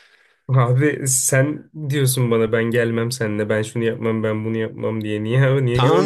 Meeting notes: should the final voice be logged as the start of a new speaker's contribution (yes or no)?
yes